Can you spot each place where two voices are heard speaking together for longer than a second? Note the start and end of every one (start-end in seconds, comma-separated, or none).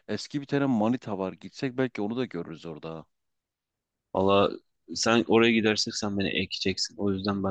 none